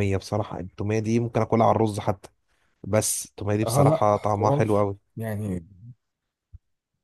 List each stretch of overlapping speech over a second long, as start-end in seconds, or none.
3.7-5.0